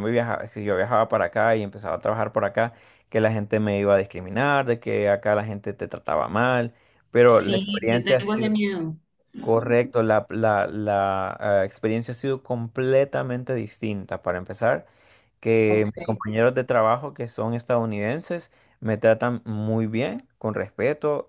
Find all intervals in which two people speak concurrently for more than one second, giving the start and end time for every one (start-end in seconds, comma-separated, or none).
7.3-8.5